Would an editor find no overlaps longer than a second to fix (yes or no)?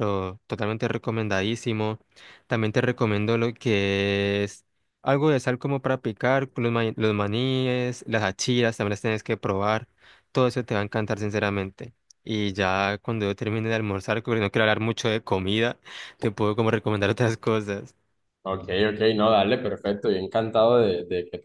yes